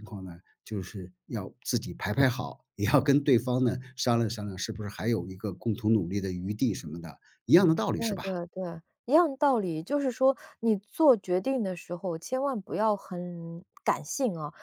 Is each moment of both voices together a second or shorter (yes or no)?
yes